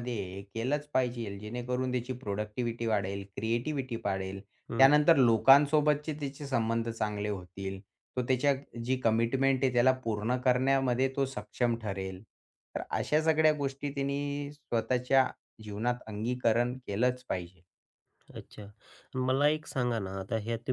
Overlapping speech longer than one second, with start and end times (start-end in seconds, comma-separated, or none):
none